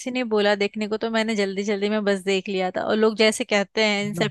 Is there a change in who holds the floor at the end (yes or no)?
no